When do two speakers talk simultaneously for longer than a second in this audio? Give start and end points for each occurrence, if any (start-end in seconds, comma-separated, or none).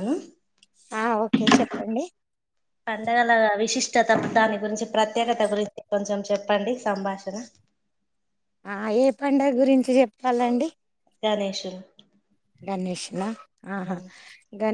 none